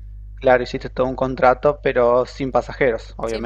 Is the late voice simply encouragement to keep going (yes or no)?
no